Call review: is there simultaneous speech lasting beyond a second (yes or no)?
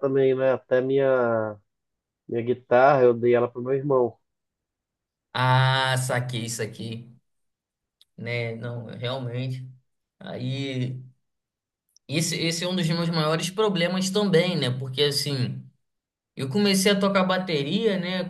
no